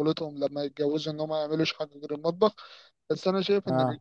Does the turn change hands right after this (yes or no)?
no